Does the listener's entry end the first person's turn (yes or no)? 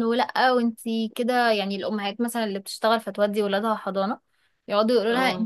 no